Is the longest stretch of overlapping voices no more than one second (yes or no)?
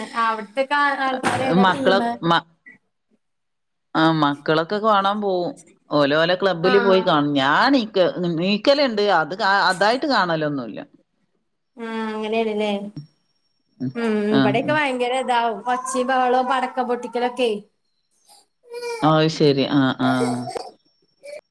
yes